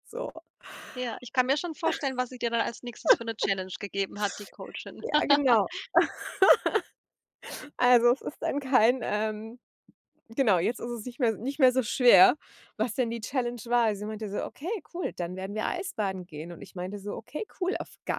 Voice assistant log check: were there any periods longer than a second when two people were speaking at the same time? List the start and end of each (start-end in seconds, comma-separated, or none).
none